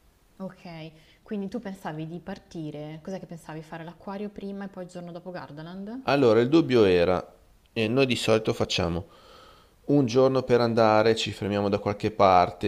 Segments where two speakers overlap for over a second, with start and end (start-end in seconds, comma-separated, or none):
none